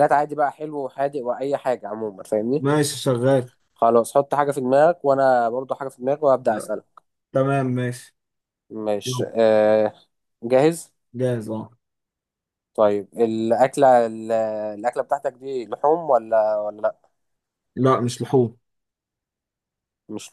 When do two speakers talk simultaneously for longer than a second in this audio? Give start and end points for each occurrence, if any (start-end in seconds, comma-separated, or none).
none